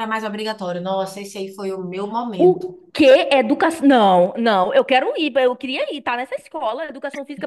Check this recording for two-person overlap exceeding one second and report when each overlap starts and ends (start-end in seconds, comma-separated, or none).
none